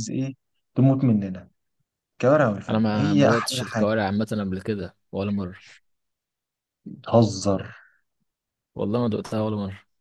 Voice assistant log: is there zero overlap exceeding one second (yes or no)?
no